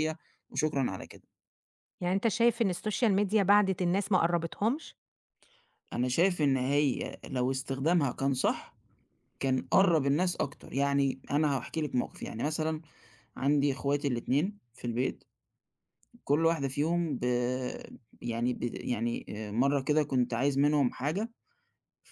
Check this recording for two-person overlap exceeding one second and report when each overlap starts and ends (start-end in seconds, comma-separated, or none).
none